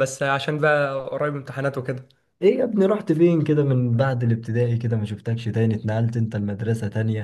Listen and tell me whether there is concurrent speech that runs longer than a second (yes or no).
no